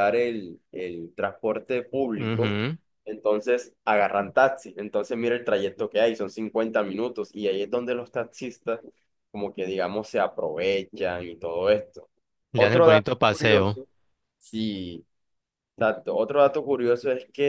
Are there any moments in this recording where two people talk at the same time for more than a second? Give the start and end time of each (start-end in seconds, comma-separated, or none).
12.5-13.8